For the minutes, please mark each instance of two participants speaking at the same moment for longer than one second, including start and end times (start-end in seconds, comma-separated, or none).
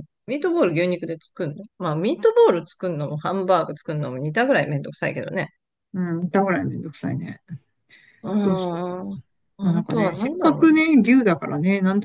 9.6-10.8